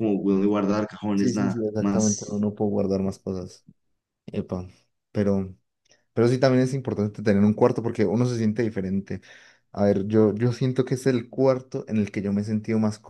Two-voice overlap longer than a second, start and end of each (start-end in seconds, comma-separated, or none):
1.1-2.5